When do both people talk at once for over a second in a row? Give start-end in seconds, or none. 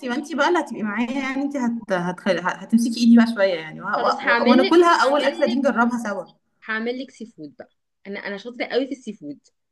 4.0-5.6